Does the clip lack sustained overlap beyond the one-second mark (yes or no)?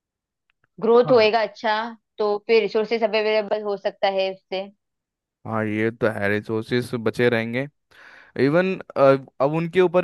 yes